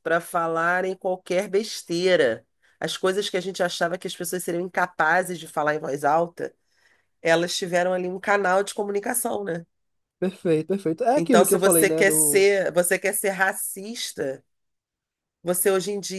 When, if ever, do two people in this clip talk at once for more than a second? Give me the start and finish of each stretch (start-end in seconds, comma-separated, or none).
11.2-12.5